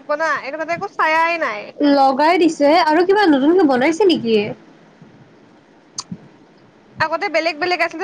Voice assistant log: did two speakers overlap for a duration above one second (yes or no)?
no